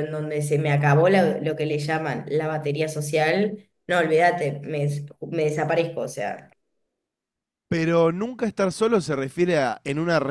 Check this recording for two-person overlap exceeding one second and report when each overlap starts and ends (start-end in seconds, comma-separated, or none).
none